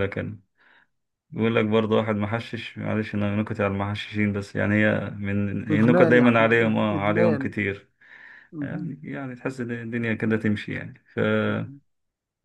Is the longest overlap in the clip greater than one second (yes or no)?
yes